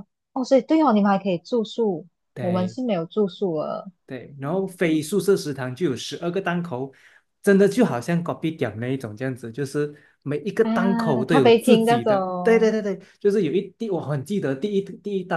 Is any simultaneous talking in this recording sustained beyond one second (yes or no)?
yes